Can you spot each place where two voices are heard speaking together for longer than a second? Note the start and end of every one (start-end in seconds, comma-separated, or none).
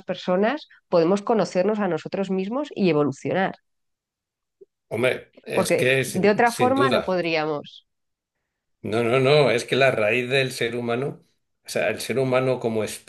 5.5-7.2